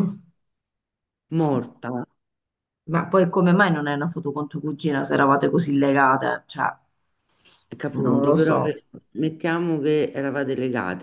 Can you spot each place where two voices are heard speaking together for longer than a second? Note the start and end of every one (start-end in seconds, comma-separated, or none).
none